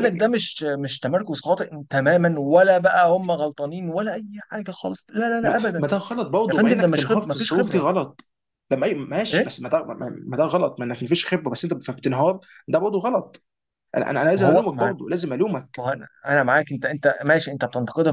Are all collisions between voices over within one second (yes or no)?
no